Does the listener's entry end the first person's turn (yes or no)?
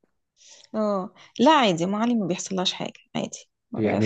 yes